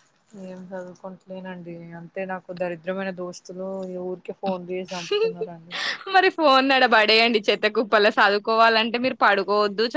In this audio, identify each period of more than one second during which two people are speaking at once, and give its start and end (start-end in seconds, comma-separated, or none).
none